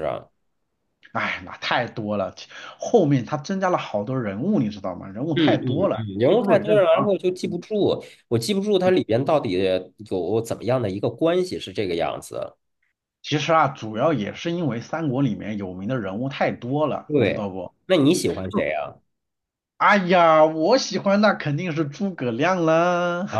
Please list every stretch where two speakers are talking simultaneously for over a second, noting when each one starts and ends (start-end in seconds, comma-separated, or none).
5.4-7.6